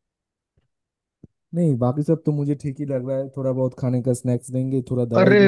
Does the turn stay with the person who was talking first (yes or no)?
no